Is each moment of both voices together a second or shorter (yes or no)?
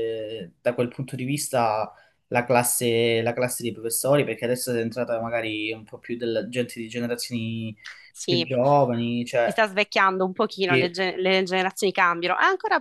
yes